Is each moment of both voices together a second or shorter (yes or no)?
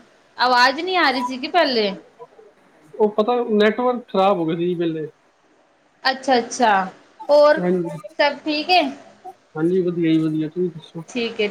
yes